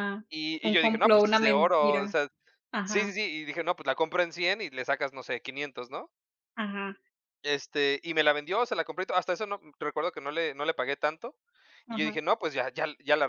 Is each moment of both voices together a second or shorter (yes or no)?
no